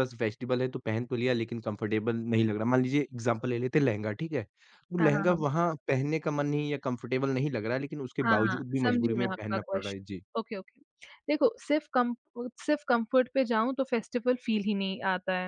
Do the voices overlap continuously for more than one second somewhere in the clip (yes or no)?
yes